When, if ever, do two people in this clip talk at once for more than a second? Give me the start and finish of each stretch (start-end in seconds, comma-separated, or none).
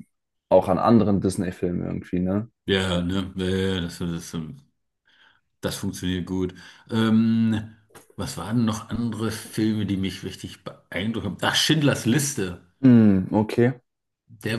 none